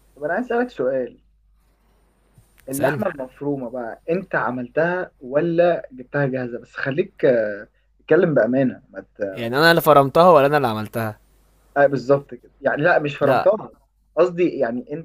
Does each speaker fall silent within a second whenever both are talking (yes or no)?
yes